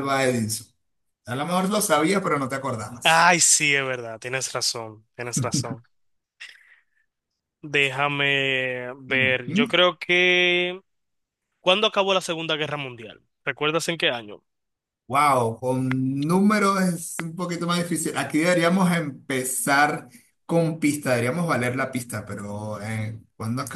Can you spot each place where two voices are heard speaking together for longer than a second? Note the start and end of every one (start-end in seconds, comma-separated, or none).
none